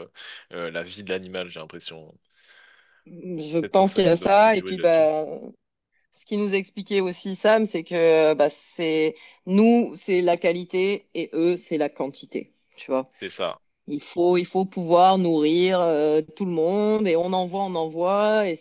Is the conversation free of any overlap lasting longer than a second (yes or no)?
no